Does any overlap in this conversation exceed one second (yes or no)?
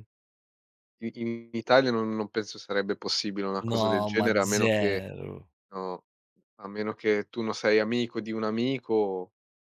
yes